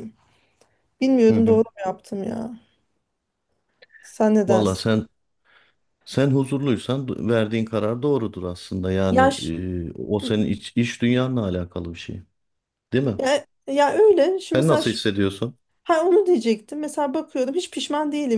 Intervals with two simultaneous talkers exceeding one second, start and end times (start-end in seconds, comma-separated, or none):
none